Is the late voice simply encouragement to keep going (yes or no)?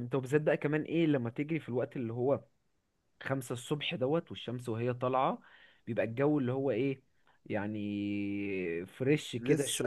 no